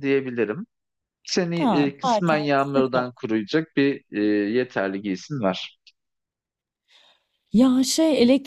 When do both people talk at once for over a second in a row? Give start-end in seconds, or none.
1.6-3.0